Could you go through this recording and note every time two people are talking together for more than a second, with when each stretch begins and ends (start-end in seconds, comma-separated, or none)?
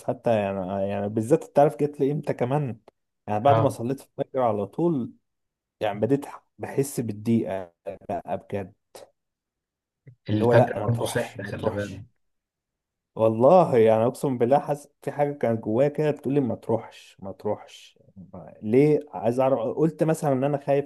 10.3-11.9